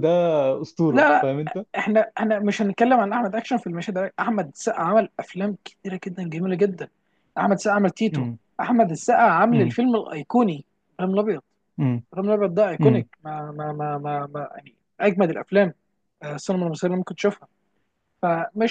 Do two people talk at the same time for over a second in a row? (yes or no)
no